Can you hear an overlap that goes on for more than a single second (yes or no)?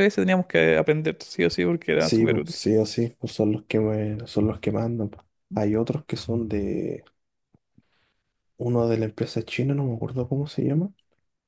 no